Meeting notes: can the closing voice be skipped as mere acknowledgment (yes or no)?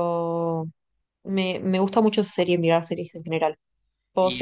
no